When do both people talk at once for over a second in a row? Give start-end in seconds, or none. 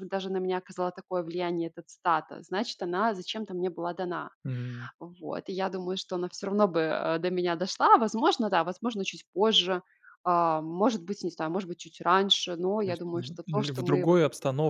12.8-14.2